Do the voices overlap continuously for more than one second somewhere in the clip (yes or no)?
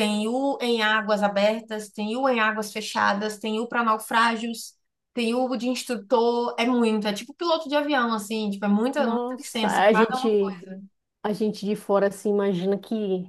yes